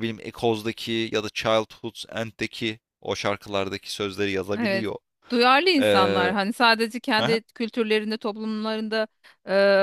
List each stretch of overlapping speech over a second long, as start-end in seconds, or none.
none